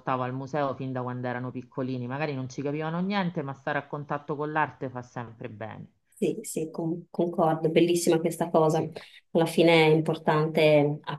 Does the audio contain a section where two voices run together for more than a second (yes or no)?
no